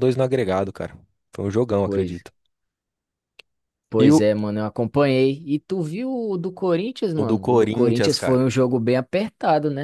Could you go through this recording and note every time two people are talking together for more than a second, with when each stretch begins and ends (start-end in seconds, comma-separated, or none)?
7.2-8.4